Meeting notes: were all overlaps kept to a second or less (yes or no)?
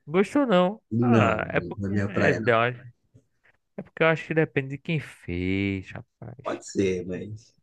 no